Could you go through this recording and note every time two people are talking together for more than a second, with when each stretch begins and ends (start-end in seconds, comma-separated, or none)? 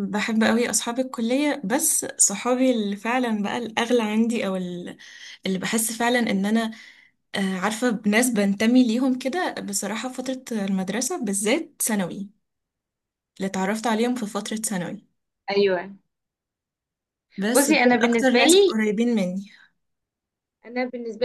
17.5-18.7